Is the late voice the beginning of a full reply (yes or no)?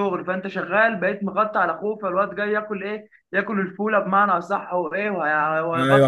yes